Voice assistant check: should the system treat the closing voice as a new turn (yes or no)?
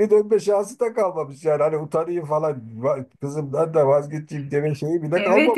yes